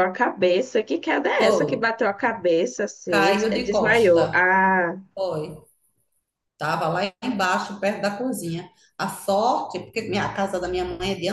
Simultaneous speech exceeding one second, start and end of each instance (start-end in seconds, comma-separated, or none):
3.1-4.5